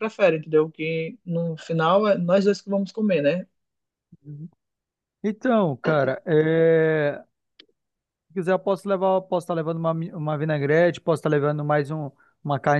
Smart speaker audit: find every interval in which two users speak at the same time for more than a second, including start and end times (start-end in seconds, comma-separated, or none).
none